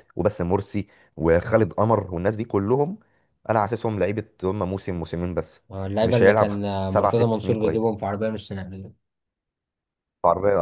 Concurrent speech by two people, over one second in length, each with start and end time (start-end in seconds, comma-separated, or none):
6.0-8.0